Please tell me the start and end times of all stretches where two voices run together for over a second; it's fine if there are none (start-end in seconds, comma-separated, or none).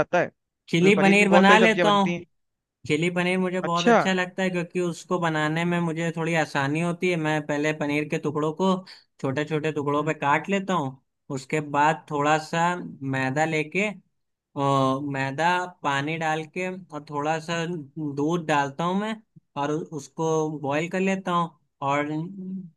0.7-2.1